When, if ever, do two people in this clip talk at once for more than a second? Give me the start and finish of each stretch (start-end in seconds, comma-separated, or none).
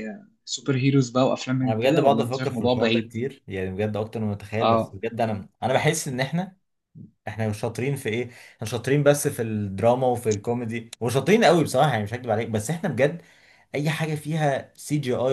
1.6-3.1